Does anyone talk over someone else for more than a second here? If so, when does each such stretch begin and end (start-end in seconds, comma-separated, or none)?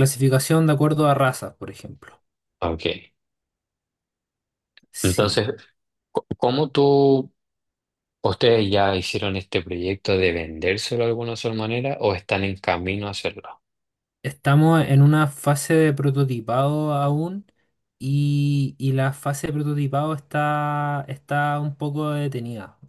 none